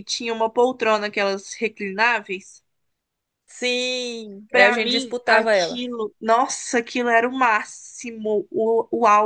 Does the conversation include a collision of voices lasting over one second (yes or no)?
yes